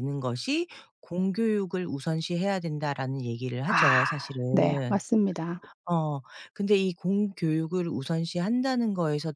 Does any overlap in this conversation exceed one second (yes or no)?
yes